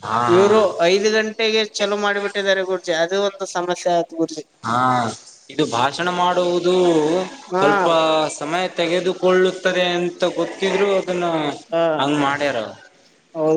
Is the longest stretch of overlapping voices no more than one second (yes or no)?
yes